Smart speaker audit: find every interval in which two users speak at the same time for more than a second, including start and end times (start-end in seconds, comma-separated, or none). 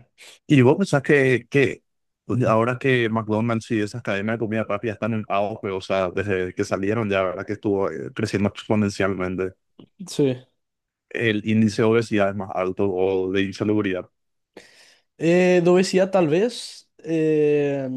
none